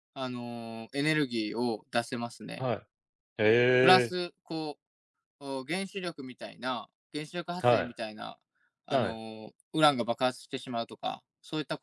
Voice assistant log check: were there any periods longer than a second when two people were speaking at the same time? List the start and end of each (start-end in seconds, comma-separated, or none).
none